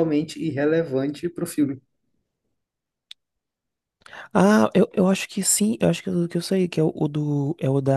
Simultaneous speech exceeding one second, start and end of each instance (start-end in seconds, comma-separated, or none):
none